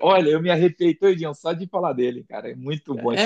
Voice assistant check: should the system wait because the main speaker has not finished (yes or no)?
no